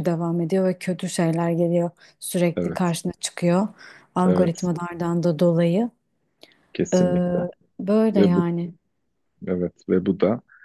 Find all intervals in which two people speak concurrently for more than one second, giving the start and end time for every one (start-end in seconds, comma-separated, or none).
none